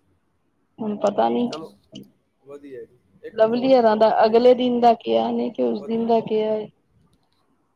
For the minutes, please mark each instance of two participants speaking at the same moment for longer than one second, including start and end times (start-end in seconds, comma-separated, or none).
3.4-4.7